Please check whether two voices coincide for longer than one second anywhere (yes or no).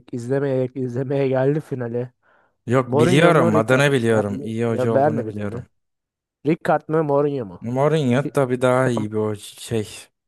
yes